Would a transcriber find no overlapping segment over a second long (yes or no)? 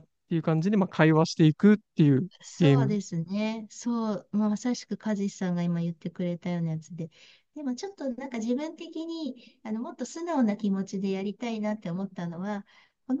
yes